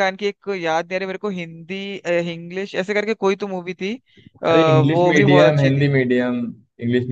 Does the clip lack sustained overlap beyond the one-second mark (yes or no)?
no